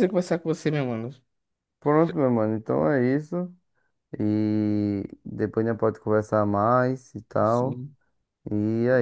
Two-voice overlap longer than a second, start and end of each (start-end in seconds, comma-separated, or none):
none